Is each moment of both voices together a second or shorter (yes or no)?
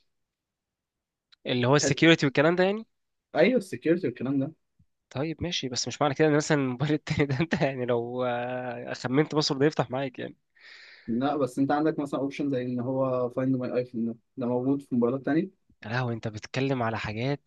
yes